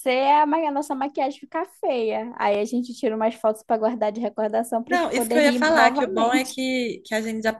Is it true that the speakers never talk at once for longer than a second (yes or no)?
no